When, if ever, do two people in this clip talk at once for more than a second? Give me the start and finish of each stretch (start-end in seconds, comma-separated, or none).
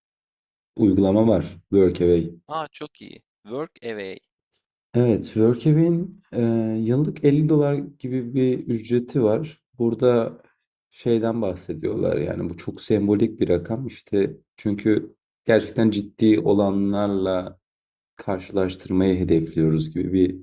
none